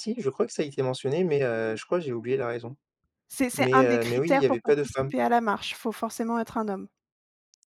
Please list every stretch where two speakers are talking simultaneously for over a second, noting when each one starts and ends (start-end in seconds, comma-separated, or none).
3.5-5.1